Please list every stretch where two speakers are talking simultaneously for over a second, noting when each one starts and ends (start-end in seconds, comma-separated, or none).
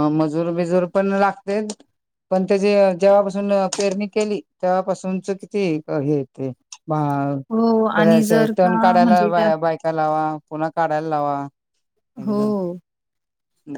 8.0-9.5